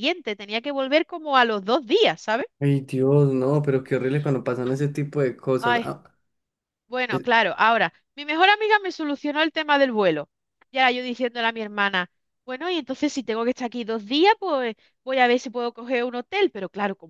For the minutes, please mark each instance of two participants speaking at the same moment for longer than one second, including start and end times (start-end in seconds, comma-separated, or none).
none